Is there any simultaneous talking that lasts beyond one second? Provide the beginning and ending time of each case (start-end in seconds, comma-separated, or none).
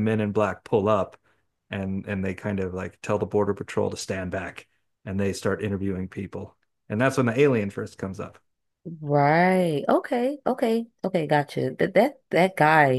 none